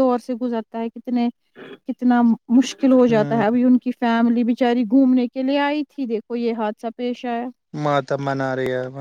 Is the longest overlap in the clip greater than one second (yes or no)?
no